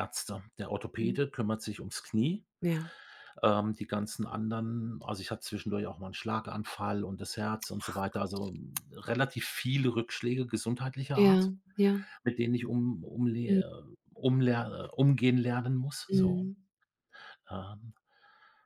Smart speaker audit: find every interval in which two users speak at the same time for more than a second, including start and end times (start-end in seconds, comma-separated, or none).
none